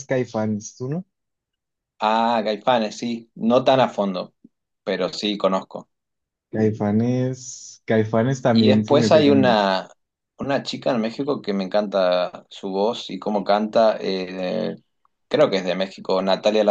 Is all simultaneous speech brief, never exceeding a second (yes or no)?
no